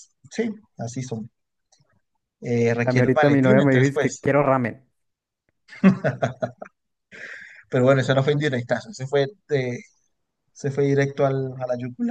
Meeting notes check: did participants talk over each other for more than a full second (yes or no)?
yes